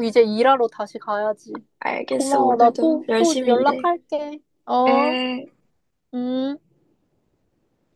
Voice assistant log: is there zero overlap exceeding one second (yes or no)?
no